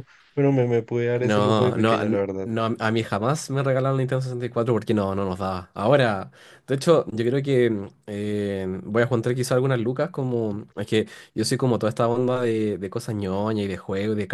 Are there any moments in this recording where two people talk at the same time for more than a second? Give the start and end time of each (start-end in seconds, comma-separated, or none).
1.2-2.5